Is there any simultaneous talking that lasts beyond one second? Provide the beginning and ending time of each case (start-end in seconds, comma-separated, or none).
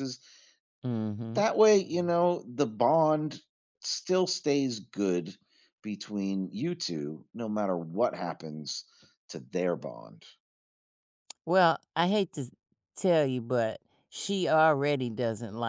none